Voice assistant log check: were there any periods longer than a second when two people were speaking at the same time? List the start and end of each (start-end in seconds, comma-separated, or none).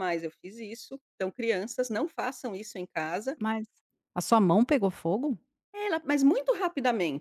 none